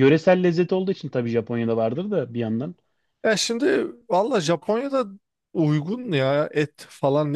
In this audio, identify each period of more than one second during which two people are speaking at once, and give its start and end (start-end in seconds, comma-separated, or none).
none